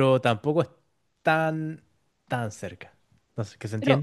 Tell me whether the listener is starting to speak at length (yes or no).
no